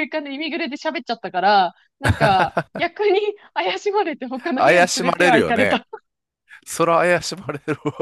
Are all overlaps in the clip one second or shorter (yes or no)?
no